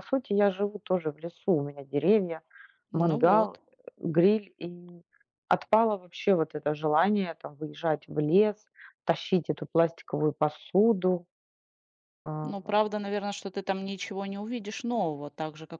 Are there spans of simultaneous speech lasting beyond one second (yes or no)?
no